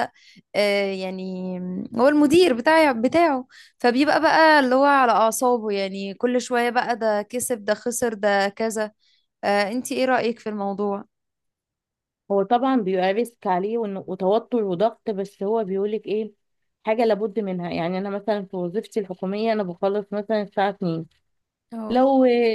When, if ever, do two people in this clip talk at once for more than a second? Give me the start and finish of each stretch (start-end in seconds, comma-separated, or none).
none